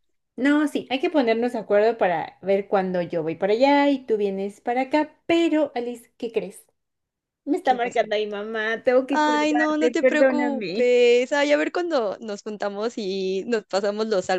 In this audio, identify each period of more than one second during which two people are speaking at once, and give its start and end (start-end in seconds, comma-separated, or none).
9.1-10.9